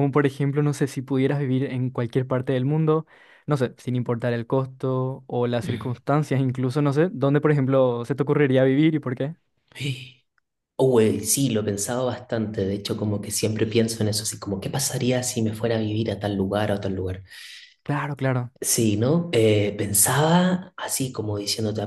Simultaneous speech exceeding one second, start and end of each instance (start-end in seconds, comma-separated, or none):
none